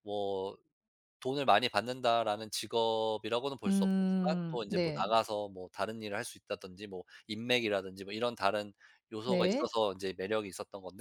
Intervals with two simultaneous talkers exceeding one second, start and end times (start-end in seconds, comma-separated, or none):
3.7-5.1